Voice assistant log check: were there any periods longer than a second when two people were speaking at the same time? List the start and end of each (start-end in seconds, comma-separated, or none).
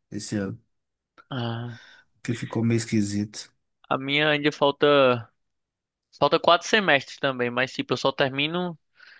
none